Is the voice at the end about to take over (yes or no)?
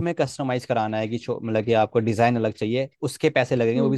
no